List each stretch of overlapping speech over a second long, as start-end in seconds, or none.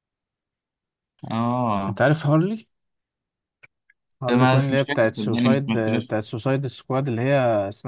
4.3-6.2